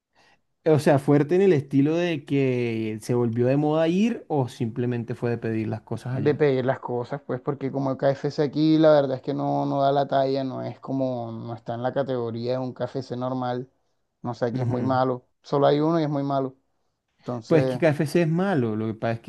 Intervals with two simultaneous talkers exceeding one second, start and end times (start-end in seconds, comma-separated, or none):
none